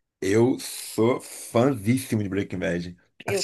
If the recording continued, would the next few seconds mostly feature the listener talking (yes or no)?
no